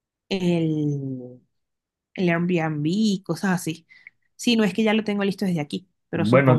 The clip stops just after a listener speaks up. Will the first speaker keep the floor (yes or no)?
no